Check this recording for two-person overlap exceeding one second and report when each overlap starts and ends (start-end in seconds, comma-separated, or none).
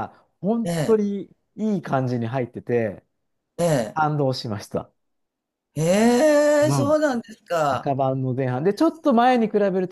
none